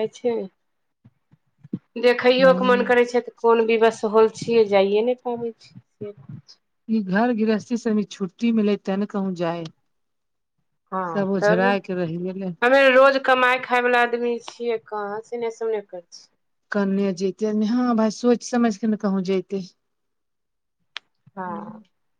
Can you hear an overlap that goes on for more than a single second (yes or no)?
no